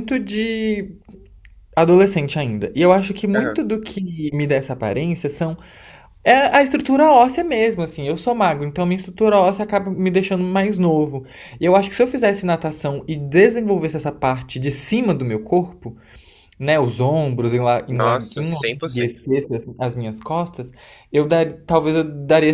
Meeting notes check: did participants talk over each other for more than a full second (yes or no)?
yes